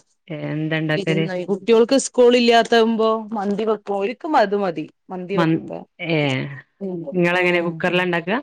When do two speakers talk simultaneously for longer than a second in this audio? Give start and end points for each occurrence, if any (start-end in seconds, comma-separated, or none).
none